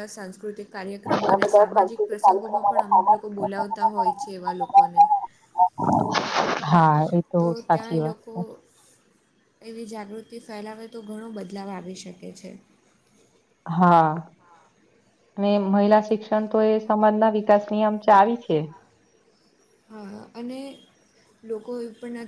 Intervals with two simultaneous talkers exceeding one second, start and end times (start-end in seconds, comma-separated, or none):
1.1-3.3